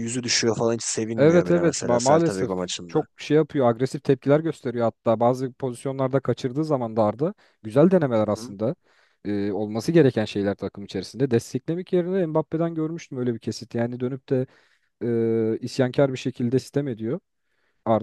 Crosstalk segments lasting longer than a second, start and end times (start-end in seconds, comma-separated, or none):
1.2-3.0